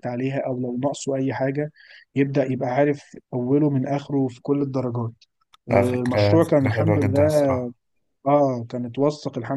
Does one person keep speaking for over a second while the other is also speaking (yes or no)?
yes